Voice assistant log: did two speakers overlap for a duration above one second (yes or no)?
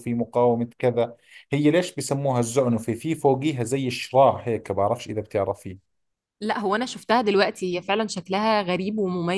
no